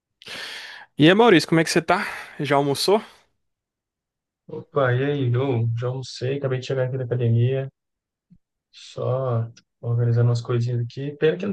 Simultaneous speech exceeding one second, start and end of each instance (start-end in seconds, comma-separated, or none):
none